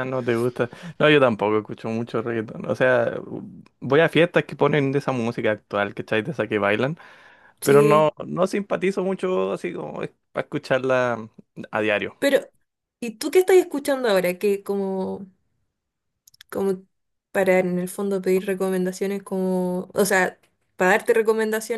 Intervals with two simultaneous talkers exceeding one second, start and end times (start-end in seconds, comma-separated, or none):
none